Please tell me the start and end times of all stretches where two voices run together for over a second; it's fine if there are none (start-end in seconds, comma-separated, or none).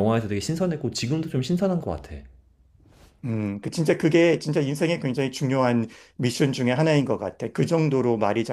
none